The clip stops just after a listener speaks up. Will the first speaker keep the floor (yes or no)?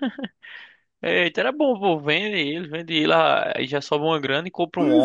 no